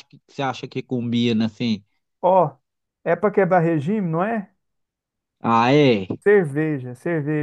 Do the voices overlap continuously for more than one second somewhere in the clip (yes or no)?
no